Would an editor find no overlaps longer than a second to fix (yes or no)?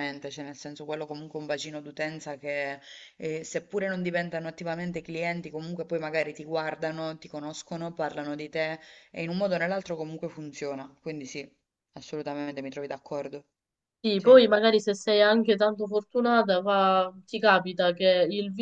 yes